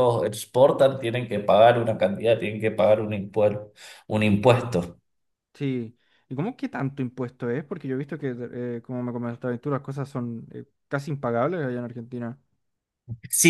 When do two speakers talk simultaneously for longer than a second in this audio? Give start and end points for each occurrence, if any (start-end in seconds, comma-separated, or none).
none